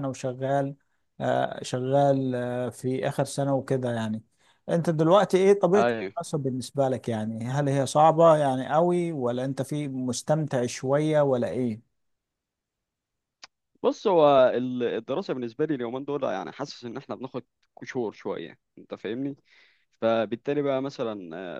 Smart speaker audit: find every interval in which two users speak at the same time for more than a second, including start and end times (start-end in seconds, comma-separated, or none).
none